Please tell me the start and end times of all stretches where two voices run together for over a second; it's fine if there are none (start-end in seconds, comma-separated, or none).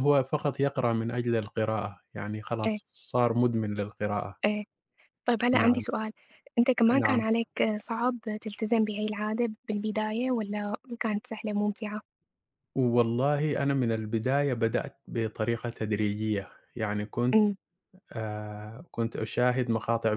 none